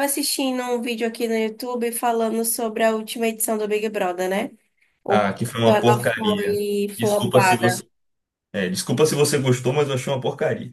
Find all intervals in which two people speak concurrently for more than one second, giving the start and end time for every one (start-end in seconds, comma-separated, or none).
5.1-7.8